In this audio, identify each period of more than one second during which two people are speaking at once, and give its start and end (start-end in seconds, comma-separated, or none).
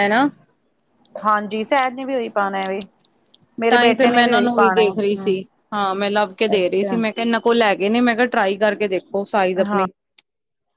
none